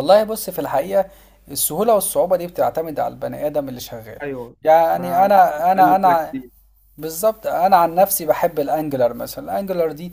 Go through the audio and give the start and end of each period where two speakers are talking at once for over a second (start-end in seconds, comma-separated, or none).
4.9-6.3